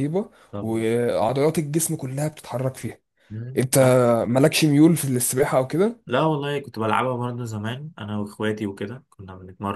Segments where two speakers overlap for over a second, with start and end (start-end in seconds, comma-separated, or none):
none